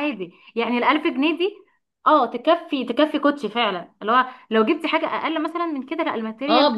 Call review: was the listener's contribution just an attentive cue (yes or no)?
no